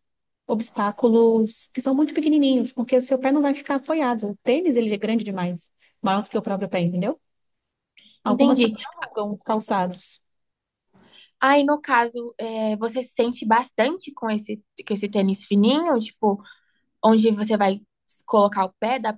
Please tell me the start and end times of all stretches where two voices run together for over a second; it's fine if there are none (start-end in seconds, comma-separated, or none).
none